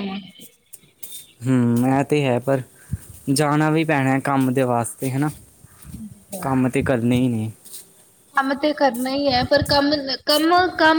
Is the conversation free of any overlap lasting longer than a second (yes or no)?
yes